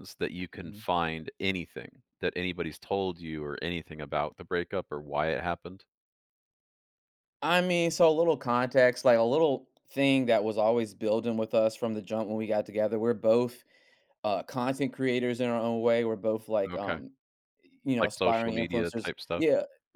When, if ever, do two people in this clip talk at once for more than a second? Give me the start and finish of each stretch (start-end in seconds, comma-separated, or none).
18.0-19.4